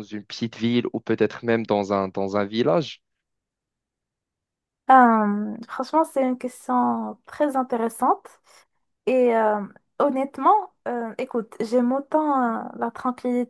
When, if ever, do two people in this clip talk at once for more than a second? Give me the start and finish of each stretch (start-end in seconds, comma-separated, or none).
none